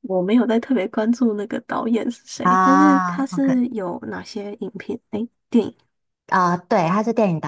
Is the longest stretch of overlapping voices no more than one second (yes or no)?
no